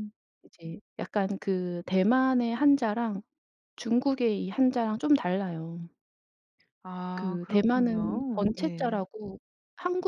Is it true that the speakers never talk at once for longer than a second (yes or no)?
no